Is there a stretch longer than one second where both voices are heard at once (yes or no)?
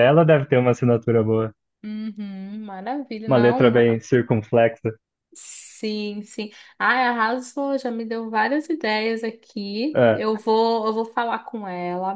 no